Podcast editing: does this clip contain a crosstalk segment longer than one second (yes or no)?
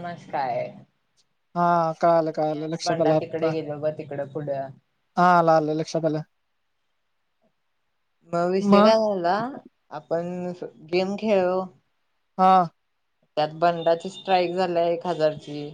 yes